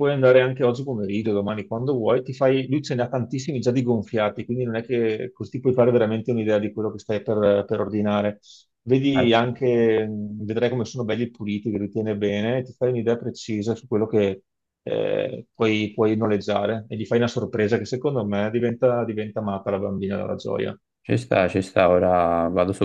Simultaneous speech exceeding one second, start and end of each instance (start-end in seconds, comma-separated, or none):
none